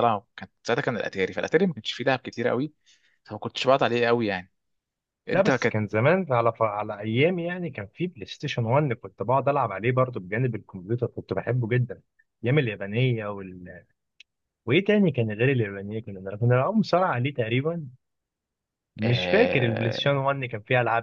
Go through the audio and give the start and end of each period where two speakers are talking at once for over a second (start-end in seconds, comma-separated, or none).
19.0-20.2